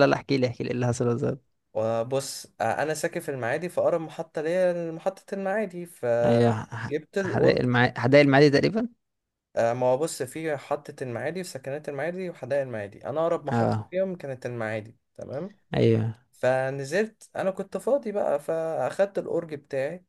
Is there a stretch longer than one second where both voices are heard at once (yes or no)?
yes